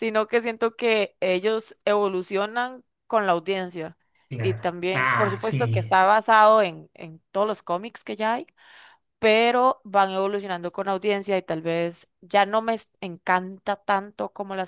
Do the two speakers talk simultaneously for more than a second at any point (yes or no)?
yes